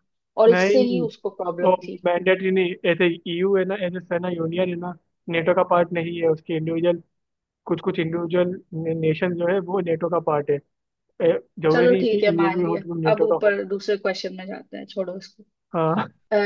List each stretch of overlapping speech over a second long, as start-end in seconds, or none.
11.7-13.6